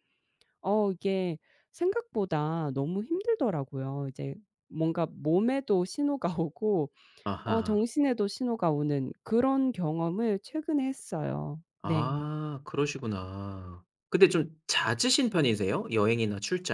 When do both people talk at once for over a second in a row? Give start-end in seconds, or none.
none